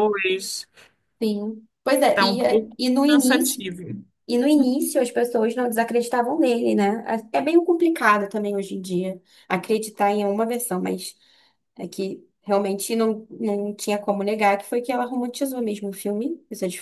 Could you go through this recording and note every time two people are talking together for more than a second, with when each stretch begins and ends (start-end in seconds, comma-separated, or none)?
2.1-3.6